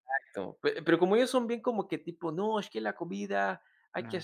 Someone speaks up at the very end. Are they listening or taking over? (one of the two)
listening